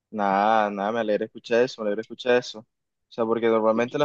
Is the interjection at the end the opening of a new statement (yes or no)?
no